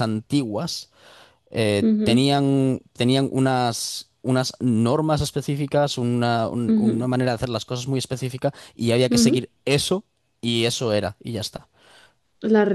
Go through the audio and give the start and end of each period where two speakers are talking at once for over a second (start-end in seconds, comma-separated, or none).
none